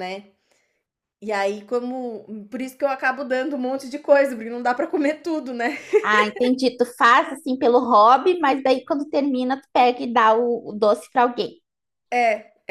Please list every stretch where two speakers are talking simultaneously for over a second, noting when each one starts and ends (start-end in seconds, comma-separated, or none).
none